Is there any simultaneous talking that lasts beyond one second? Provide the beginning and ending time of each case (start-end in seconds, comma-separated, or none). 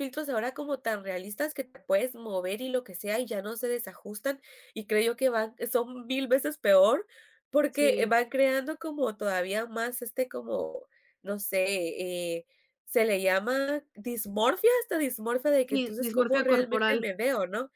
15.7-17.1